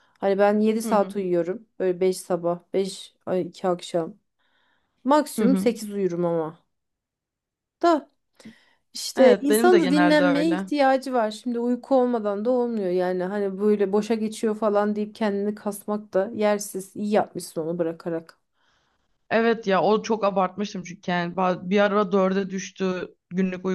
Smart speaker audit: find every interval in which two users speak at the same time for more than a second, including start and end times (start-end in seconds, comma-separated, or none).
9.2-10.7